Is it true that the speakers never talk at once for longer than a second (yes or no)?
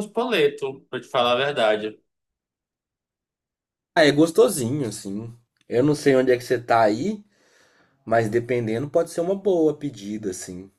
yes